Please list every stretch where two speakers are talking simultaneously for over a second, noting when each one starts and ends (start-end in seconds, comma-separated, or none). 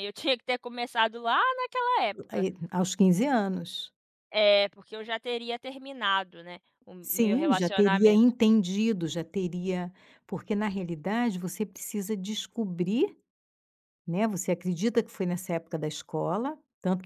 7.0-8.3